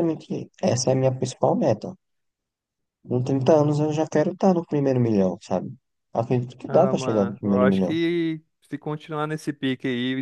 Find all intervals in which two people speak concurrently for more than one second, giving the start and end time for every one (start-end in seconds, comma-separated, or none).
6.7-8.0